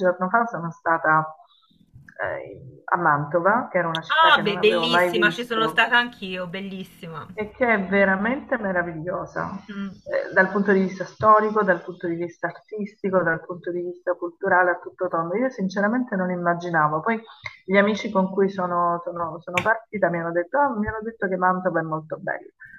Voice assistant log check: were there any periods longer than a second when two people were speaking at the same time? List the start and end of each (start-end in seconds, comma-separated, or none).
4.1-5.9